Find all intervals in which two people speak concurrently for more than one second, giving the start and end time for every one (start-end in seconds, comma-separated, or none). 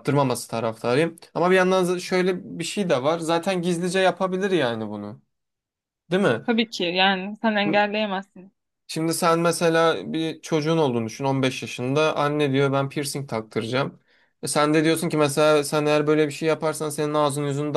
none